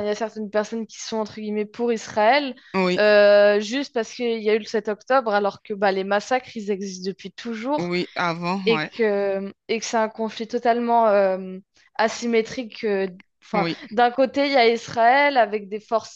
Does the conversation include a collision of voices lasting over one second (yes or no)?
no